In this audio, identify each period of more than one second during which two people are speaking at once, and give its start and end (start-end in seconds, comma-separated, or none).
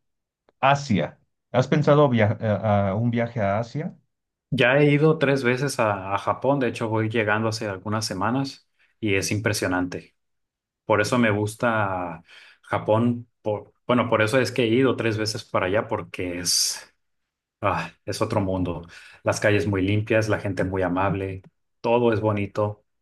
none